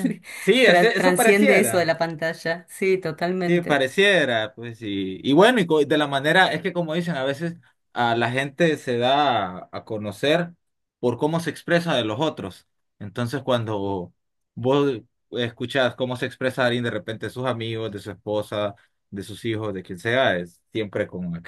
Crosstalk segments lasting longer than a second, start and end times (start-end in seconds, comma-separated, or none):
0.6-1.9